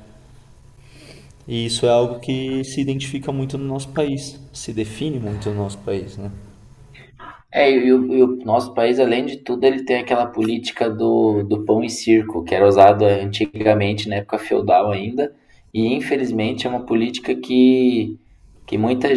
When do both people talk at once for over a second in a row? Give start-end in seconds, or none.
none